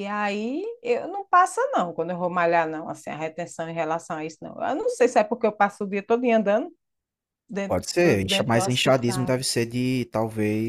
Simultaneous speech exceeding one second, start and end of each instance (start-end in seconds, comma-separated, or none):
7.7-9.4